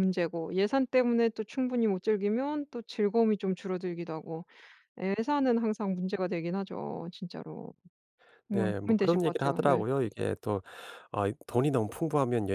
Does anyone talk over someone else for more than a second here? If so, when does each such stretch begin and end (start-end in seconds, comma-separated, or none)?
8.5-9.8